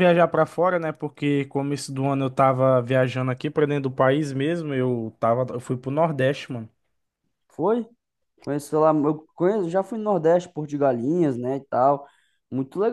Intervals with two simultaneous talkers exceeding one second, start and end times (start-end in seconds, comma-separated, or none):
none